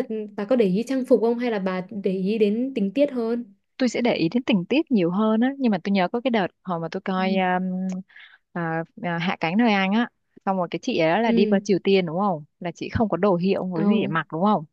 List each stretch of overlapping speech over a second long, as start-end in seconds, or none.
none